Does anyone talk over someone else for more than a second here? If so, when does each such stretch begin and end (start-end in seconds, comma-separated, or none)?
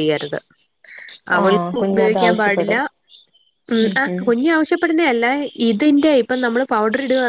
1.4-2.8